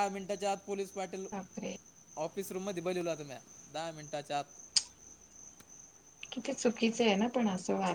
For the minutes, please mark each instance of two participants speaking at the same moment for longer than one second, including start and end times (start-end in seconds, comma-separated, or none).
none